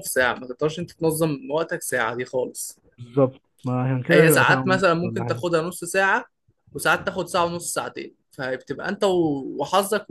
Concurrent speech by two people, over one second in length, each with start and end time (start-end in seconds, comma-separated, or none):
4.1-5.4